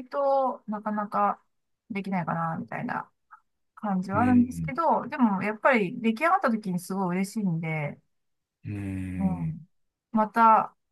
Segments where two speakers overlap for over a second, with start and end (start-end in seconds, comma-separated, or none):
none